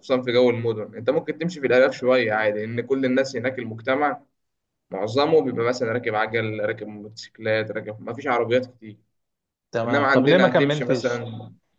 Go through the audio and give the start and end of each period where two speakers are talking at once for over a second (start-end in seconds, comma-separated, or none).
9.8-11.2